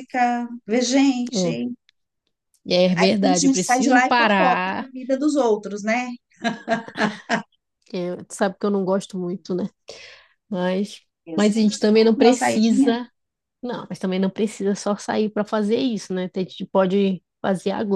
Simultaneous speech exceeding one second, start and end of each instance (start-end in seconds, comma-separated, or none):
2.9-4.9, 11.2-13.0